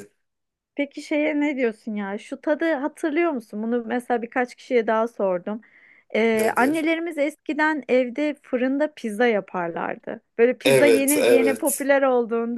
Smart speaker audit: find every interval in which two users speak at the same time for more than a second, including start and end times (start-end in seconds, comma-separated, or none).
10.7-11.8